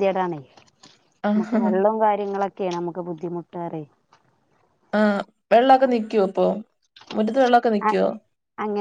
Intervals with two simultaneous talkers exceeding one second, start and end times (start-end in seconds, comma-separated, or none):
none